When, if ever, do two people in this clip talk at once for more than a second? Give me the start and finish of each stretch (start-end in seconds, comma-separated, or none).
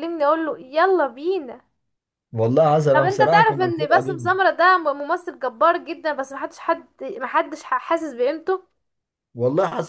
2.9-4.3